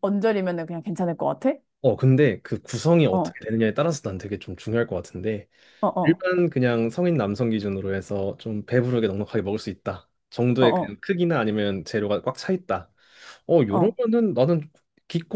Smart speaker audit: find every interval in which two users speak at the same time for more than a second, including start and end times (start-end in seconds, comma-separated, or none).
none